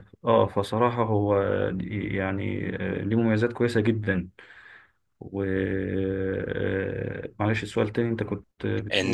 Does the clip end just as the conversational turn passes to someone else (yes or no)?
yes